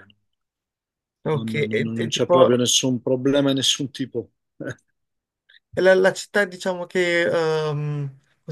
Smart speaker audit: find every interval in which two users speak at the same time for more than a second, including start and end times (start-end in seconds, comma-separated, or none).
1.3-2.6